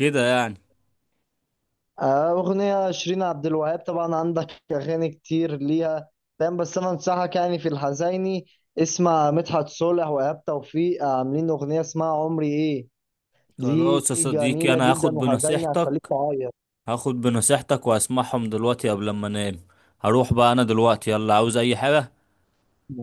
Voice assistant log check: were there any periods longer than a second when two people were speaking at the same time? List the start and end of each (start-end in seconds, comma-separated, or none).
13.6-16.1